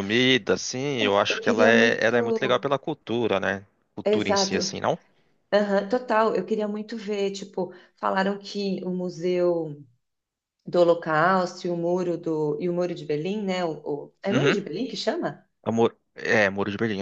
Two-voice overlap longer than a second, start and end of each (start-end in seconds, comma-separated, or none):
1.0-2.7